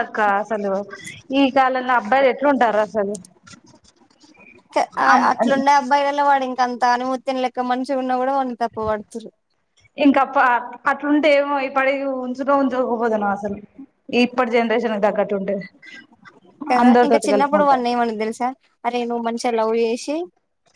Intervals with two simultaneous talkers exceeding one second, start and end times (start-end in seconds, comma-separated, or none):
none